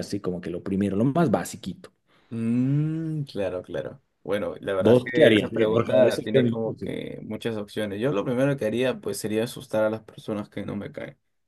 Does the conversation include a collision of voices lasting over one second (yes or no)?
yes